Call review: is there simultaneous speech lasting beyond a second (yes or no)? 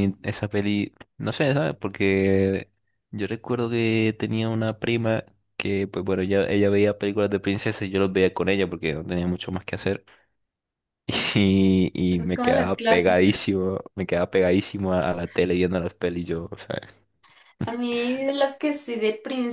yes